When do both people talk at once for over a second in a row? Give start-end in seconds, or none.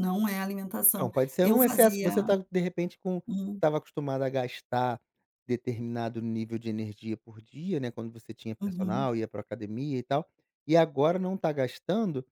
1.0-2.3